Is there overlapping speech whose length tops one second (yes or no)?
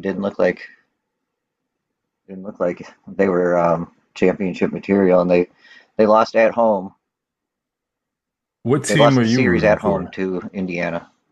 yes